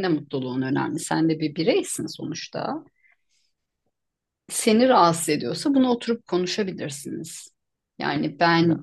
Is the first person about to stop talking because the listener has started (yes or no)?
no